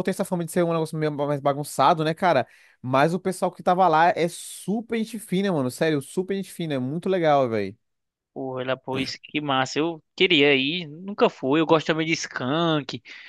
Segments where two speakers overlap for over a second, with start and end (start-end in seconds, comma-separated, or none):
none